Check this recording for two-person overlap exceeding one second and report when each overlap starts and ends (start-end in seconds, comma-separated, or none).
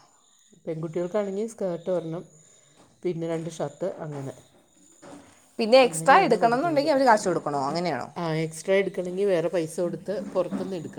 none